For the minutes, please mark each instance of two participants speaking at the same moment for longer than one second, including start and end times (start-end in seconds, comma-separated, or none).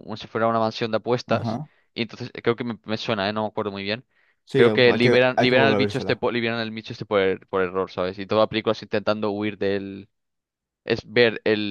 4.5-6.2